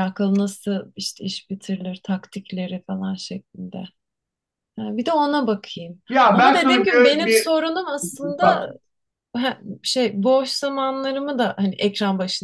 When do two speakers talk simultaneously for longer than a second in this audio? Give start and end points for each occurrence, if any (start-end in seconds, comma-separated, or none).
6.1-7.5